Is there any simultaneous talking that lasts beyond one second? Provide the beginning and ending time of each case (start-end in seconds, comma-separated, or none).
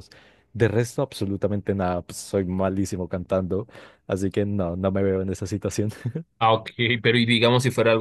none